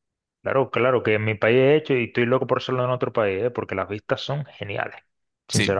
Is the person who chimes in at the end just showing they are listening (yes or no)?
no